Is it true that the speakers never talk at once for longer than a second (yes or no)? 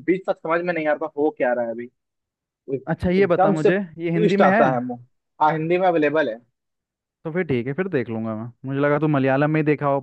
no